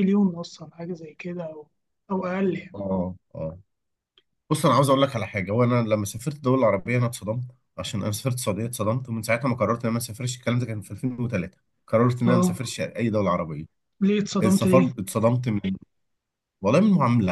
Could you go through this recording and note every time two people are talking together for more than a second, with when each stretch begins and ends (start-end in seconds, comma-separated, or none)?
none